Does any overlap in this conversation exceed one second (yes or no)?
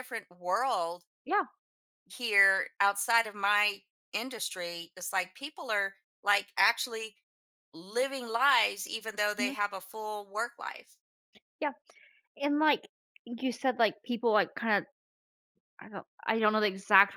no